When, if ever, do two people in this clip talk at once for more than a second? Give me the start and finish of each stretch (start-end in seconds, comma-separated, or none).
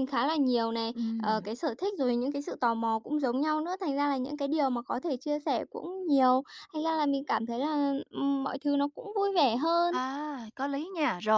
none